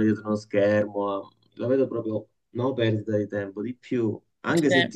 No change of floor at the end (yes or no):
yes